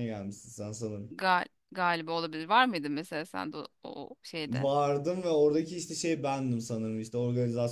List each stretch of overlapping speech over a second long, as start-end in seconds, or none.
none